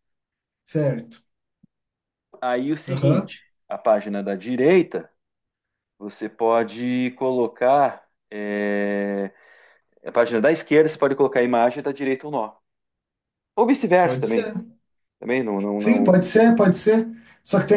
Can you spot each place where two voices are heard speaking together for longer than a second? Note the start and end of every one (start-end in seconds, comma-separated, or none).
none